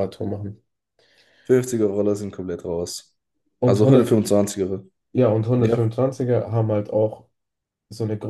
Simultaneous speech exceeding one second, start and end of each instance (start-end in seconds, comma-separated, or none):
none